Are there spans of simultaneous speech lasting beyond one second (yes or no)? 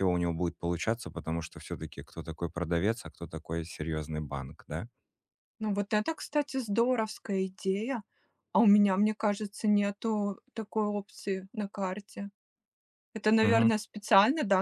no